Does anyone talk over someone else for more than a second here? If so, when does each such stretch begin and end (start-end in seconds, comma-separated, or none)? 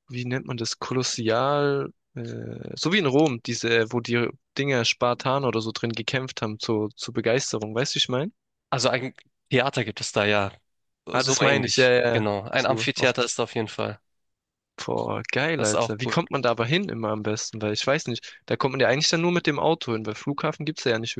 11.1-13.3